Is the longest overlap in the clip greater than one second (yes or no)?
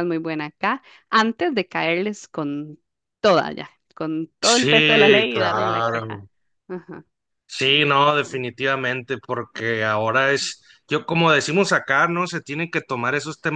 yes